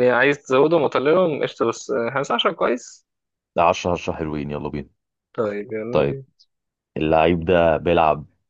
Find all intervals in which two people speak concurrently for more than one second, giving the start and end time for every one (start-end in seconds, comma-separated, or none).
none